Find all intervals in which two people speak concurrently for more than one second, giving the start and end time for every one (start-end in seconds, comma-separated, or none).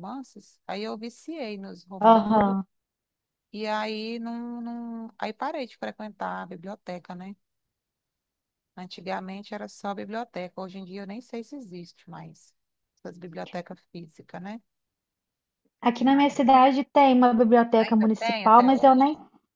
17.8-19.0